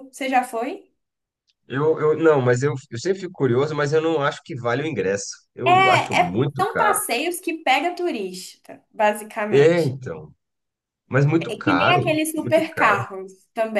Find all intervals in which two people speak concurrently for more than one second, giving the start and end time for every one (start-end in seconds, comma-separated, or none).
5.7-7.0, 11.4-13.1